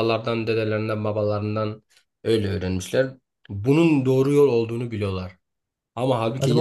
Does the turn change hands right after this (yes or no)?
no